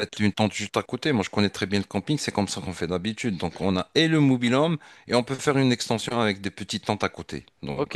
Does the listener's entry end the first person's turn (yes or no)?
yes